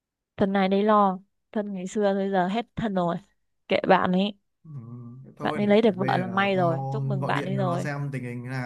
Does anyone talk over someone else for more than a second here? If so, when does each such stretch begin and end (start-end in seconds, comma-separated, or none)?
5.4-7.9